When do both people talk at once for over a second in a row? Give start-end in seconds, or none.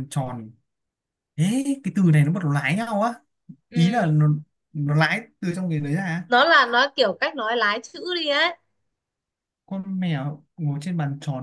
none